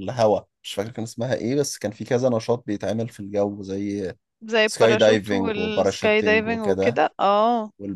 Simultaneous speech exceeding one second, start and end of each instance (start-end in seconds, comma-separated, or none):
4.6-7.0